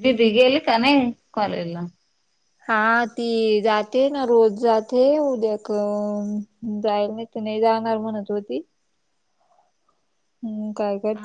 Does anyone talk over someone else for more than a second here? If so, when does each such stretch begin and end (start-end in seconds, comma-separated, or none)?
none